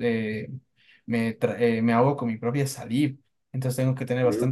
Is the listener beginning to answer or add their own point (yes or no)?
no